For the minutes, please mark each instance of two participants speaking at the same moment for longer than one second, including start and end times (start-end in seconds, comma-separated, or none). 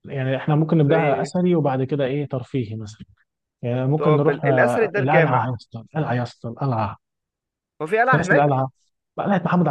4.0-5.5